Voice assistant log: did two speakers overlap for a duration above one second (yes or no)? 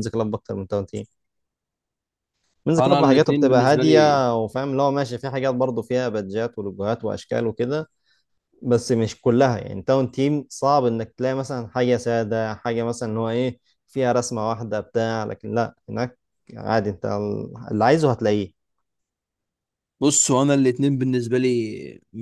yes